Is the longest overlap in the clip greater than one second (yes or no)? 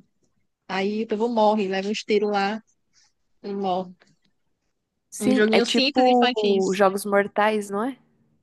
yes